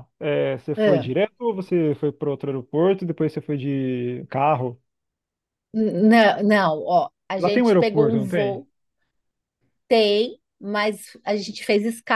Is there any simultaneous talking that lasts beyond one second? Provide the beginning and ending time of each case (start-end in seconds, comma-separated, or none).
7.4-8.6